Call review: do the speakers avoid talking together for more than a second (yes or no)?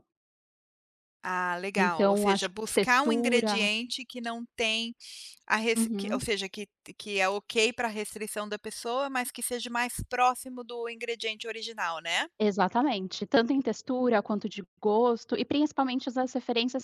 no